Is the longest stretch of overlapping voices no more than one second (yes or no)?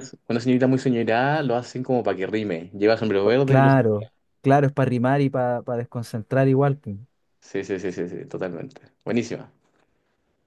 yes